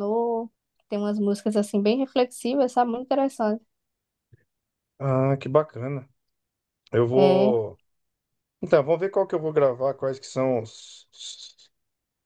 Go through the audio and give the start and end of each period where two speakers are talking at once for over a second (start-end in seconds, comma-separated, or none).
none